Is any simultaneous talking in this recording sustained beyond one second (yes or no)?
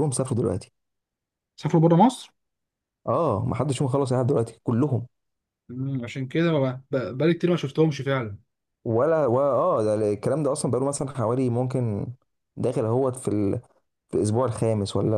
no